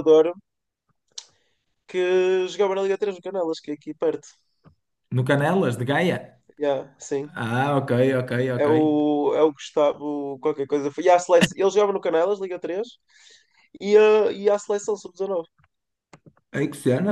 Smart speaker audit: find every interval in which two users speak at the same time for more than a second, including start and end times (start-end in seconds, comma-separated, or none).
none